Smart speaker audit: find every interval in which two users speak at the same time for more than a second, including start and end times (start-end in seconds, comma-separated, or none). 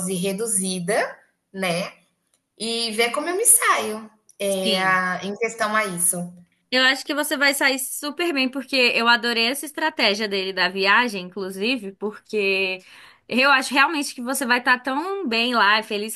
none